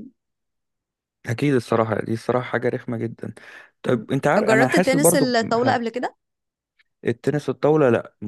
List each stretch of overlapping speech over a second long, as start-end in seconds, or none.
3.9-5.8